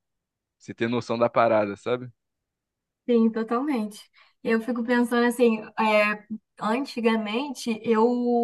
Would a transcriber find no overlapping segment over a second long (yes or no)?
yes